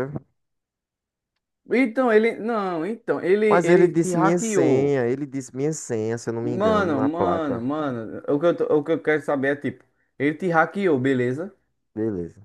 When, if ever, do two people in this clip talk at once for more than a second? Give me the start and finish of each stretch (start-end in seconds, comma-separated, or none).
3.5-5.0, 6.4-7.6